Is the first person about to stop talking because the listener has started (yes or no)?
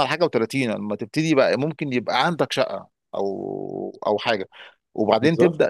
no